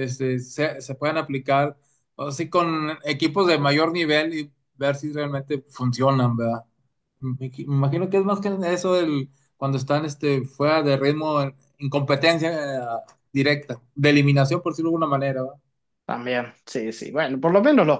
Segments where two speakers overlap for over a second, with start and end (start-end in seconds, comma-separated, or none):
none